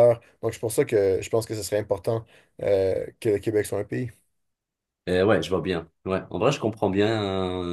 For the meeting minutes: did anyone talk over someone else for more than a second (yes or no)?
no